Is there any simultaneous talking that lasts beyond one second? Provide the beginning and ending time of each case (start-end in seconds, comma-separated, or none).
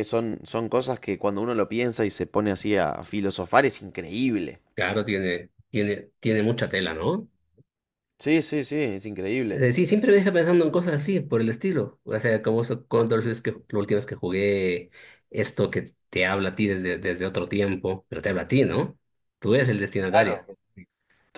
none